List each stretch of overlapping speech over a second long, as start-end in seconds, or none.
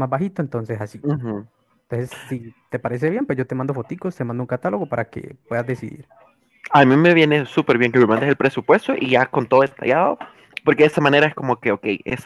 none